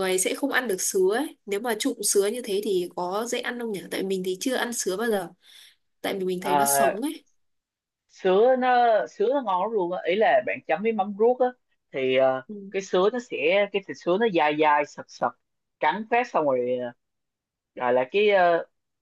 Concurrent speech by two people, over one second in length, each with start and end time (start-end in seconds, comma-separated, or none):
none